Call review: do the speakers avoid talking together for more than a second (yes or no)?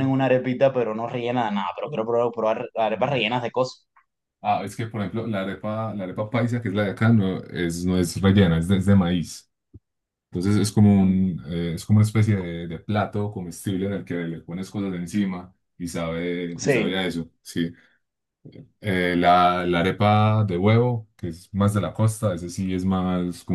yes